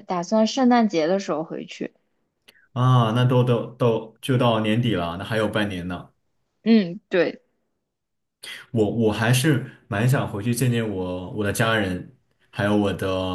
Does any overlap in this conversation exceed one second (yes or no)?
no